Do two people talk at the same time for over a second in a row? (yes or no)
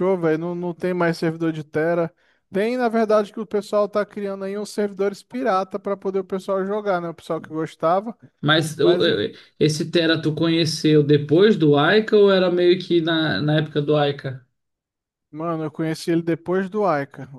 no